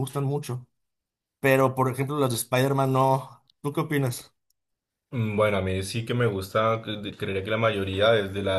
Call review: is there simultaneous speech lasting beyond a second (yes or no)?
no